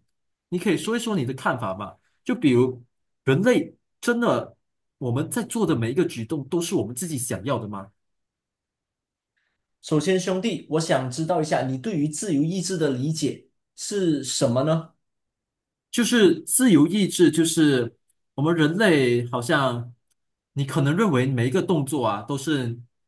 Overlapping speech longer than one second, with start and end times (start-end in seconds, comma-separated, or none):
none